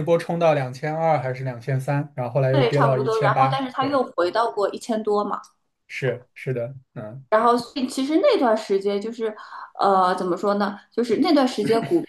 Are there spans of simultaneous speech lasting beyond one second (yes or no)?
yes